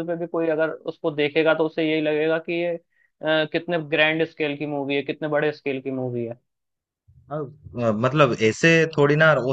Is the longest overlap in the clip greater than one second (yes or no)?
no